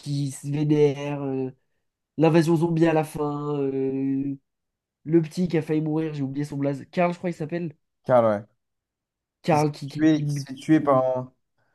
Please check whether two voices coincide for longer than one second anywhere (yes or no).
yes